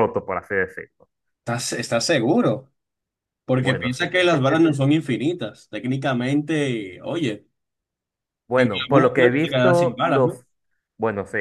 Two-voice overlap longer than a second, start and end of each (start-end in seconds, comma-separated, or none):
8.6-10.4